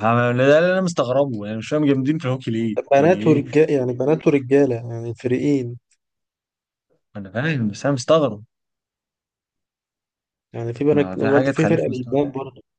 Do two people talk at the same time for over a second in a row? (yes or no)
yes